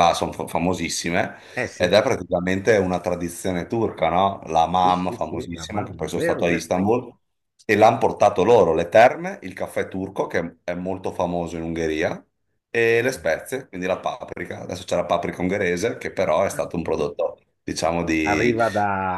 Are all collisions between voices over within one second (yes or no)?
no